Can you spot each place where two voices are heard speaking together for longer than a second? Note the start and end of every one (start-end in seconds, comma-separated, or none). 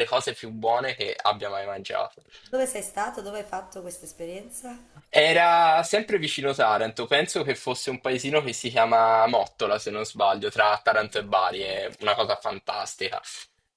none